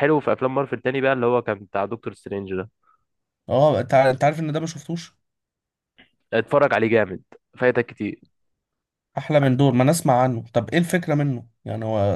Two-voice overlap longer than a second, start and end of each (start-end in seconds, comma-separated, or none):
none